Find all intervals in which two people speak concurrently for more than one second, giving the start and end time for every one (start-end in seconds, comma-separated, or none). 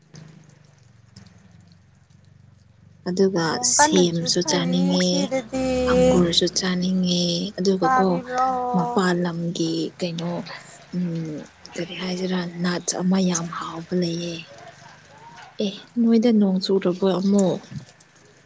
3.5-5.1